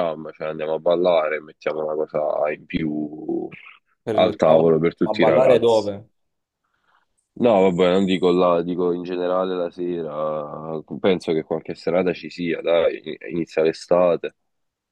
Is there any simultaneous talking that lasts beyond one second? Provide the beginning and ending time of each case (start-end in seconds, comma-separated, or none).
4.1-5.9